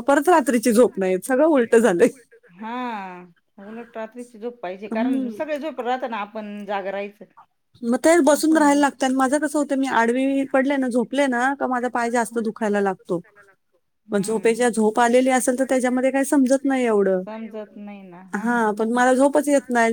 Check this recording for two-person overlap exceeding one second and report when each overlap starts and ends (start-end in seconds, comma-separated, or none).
15.0-17.2